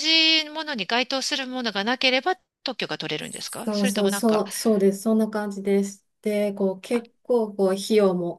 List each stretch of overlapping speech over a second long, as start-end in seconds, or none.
3.2-4.4